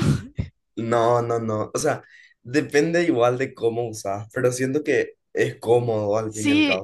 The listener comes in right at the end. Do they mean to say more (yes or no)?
yes